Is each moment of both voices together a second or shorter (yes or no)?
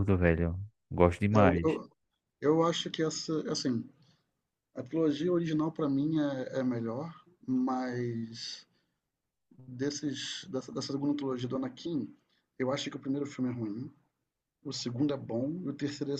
yes